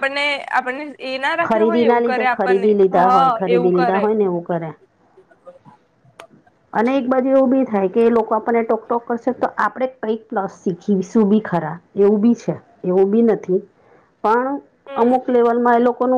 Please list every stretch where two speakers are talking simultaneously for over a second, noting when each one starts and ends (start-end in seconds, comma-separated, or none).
1.5-4.0